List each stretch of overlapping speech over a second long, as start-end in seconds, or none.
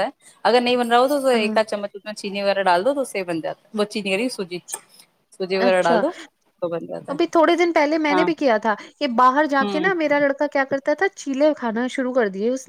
none